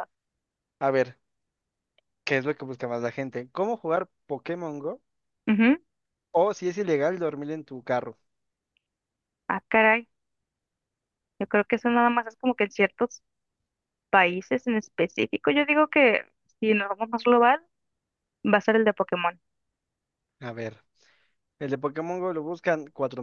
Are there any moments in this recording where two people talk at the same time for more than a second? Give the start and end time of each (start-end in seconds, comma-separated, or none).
none